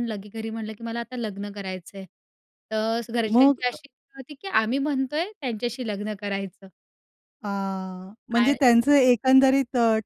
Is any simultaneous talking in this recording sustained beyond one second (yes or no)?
no